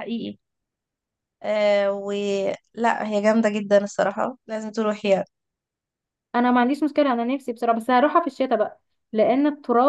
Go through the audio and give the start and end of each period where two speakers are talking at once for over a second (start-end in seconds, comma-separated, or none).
none